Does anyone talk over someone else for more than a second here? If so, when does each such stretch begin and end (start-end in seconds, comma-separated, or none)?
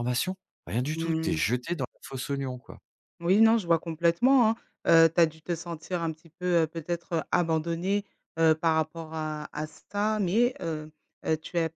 none